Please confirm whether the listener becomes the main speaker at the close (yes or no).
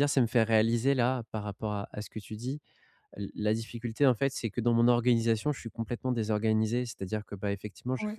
no